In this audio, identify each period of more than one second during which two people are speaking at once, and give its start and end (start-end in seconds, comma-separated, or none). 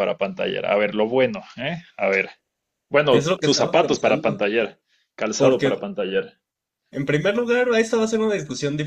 3.1-4.4